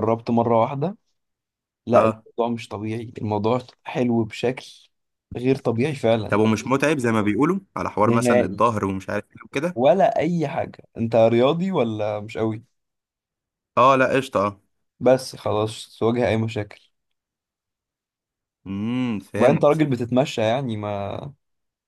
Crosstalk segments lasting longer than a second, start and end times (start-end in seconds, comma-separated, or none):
none